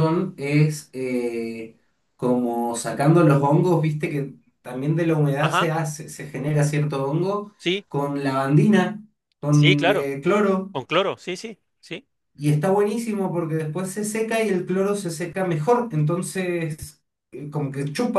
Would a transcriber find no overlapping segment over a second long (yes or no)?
yes